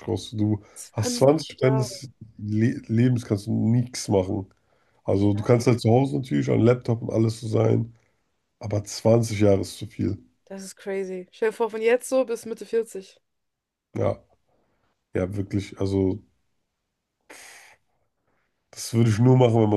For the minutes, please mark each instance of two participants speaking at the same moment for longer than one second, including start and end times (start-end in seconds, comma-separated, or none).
0.7-2.0